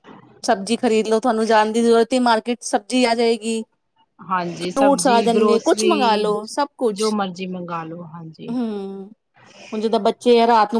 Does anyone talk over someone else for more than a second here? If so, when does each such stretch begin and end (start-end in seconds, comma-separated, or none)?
4.6-6.3